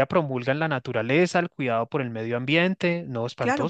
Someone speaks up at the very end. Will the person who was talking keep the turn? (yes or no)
no